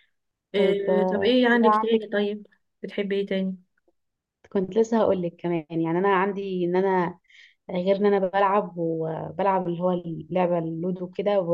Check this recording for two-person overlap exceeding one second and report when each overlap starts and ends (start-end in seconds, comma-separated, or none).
0.6-2.0